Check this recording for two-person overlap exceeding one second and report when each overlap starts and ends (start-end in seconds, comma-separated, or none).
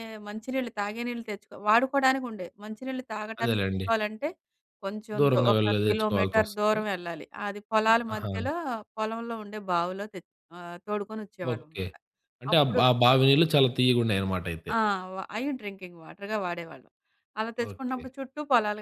5.2-6.8